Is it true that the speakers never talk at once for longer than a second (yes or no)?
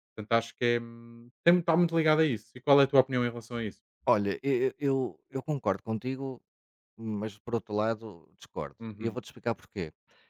yes